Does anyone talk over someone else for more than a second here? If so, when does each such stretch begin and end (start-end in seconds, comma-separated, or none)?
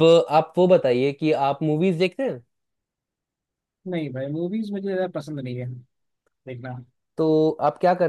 none